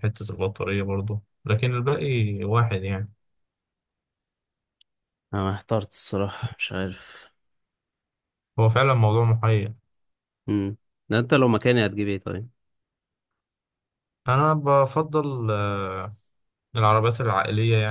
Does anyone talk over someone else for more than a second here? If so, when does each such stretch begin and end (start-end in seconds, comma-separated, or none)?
none